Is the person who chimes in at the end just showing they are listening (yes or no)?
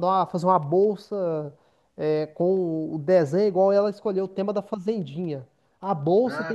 yes